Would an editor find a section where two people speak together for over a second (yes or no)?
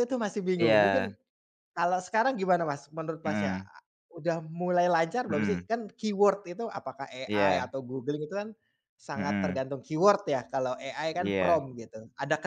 no